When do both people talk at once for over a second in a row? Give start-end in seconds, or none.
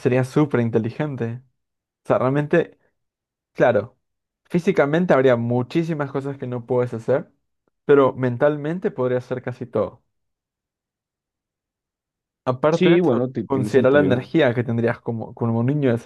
12.7-14.3